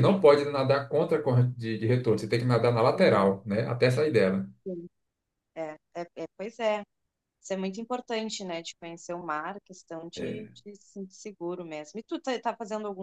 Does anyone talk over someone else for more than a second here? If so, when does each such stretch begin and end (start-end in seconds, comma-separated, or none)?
none